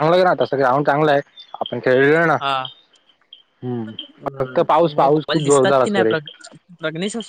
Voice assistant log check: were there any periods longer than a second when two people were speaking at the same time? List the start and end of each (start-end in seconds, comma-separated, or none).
4.4-6.1